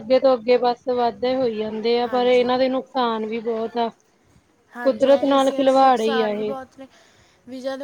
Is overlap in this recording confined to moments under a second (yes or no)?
no